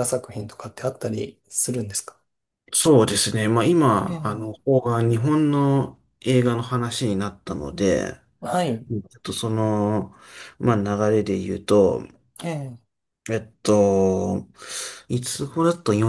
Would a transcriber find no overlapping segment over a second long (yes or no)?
yes